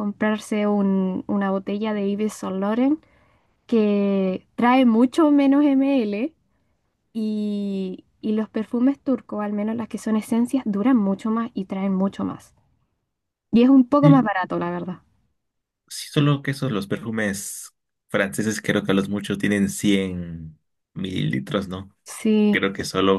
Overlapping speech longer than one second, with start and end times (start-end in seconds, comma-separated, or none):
none